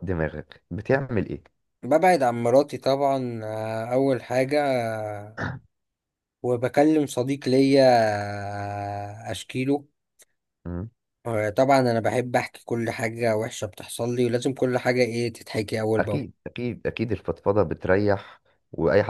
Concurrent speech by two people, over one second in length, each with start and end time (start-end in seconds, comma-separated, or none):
none